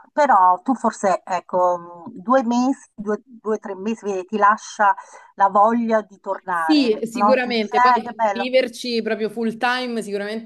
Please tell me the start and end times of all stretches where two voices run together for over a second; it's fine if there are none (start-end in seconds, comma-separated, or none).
6.5-8.5